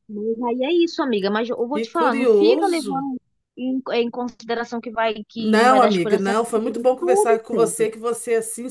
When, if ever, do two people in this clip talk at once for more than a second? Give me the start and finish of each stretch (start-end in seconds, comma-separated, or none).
1.7-3.0, 5.4-7.9